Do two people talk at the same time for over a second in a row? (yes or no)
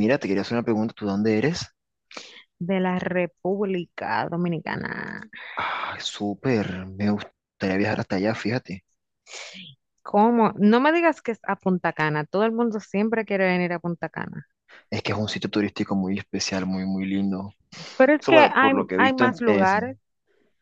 yes